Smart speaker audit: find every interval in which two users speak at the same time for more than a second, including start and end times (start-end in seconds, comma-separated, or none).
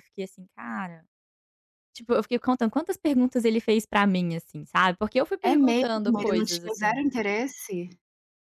5.4-7.0